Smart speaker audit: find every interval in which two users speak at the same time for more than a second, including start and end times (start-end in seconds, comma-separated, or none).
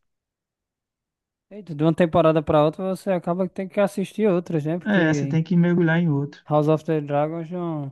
none